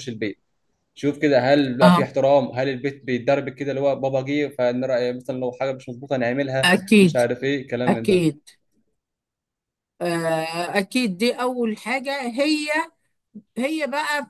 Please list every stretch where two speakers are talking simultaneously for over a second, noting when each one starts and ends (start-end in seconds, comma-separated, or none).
none